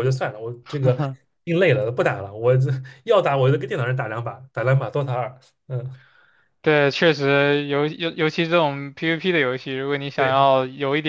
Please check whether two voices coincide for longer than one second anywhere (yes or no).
no